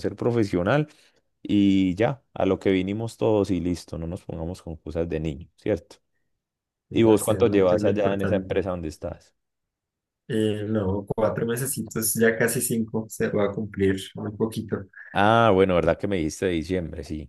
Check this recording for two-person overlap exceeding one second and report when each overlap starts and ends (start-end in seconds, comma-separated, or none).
6.9-8.5